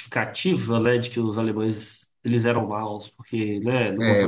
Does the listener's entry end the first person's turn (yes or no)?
no